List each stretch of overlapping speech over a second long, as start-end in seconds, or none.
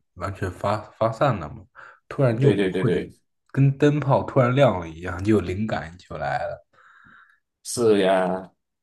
none